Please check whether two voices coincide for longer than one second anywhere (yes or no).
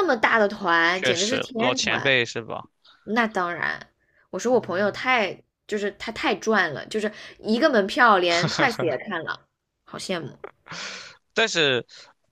yes